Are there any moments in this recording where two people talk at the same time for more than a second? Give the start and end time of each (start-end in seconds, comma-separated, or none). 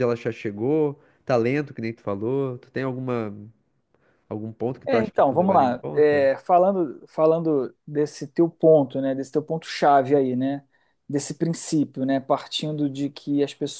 4.8-6.3